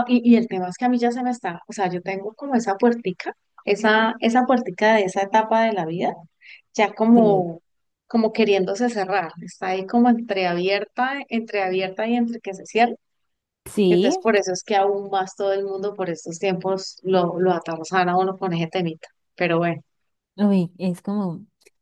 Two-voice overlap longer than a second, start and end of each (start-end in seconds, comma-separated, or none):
none